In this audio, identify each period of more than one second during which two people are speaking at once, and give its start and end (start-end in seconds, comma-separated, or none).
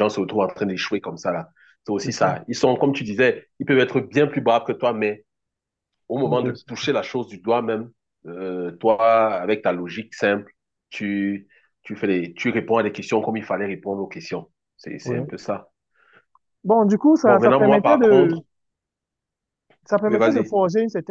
17.2-18.4